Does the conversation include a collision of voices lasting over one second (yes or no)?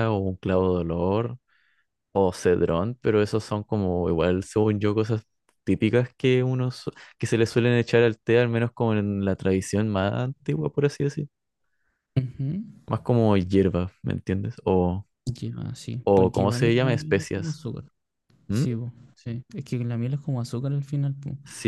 yes